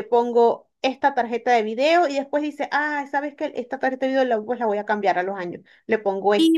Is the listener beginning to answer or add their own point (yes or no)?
no